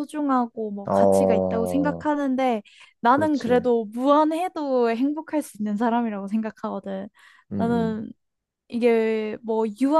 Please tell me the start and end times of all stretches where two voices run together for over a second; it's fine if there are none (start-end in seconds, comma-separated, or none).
0.8-2.1